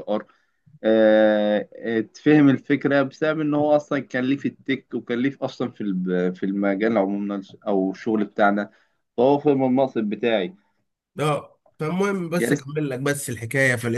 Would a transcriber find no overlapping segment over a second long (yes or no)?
yes